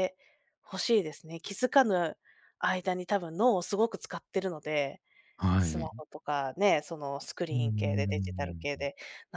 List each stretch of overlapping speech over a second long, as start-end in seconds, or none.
7.5-8.8